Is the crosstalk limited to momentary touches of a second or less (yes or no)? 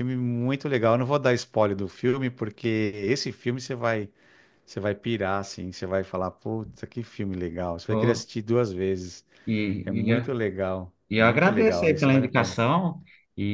no